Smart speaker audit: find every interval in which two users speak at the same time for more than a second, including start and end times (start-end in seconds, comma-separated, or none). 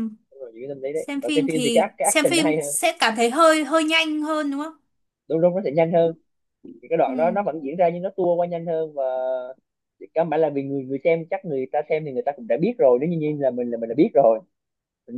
0.9-2.7